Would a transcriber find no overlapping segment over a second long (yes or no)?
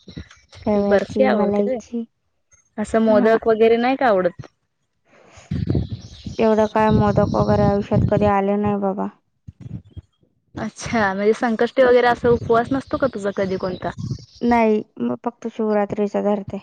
no